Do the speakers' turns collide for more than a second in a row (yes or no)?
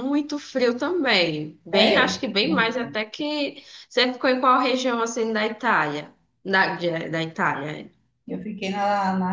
yes